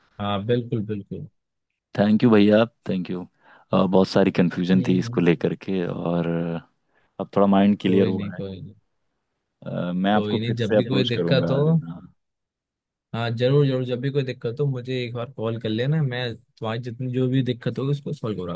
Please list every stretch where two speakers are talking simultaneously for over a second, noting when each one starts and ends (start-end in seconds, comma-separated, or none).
10.1-11.6